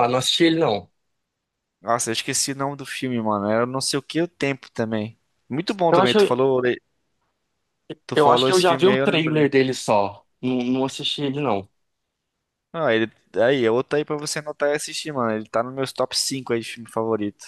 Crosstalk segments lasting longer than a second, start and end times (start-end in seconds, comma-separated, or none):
8.1-9.6